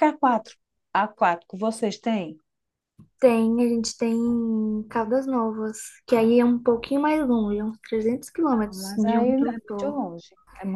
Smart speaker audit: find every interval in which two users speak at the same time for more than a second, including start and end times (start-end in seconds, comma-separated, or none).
8.5-10.0